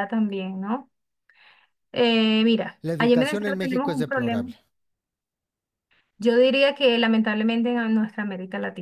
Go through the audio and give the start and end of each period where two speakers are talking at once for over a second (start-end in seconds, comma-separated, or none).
2.8-4.5